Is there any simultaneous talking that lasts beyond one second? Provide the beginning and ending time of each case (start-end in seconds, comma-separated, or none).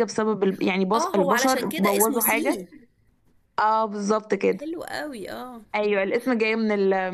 0.9-2.7